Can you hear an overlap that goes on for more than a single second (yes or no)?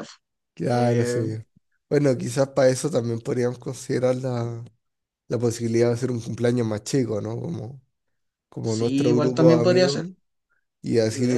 yes